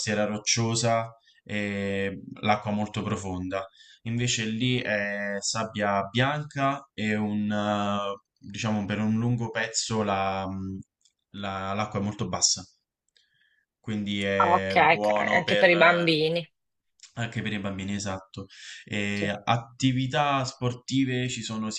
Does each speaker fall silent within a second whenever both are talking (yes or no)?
no